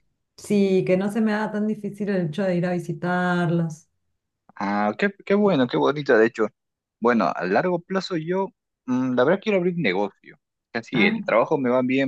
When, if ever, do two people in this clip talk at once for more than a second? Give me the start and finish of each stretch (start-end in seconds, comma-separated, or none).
none